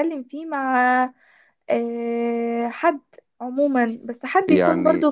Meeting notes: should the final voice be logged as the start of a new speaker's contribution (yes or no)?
no